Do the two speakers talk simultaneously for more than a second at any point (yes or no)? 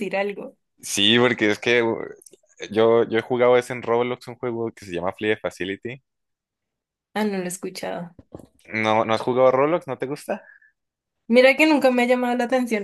no